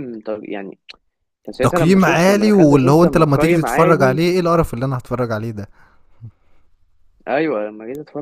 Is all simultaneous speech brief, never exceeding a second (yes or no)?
no